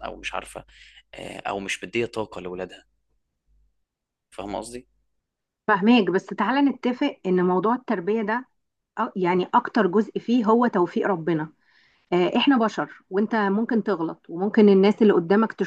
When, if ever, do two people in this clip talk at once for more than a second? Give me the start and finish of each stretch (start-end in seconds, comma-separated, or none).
none